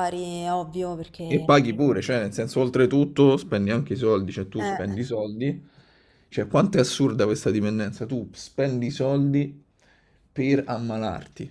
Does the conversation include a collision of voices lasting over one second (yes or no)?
no